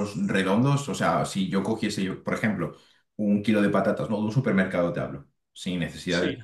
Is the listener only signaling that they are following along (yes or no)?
yes